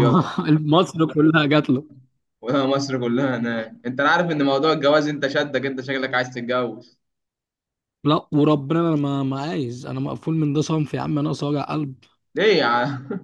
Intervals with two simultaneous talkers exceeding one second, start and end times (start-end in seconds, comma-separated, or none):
none